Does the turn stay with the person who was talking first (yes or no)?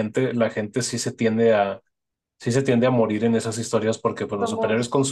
yes